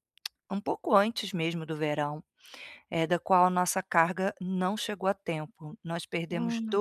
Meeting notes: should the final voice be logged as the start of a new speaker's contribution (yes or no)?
no